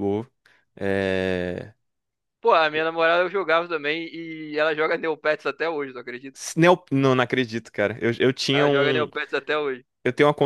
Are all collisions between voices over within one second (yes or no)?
yes